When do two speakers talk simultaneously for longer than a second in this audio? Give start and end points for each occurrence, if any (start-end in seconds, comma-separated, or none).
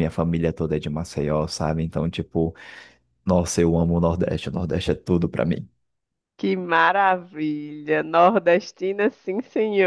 none